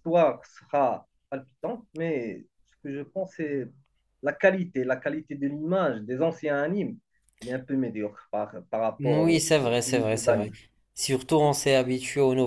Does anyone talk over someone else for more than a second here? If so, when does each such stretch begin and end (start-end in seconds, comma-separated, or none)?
9.0-10.5